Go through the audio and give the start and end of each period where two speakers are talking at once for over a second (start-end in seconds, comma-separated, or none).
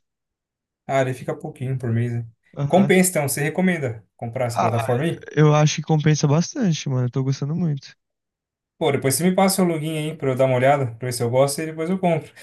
none